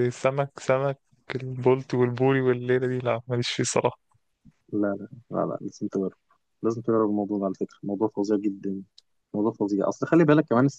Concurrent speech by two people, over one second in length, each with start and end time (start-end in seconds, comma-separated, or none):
none